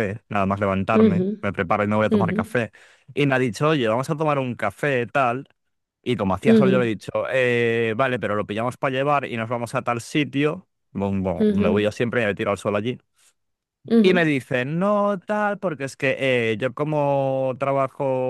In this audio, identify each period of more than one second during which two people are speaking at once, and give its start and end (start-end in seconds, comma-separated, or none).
none